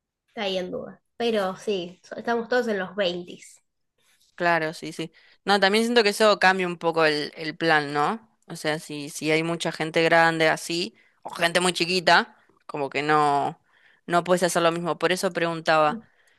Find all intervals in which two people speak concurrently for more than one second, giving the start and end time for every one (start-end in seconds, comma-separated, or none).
none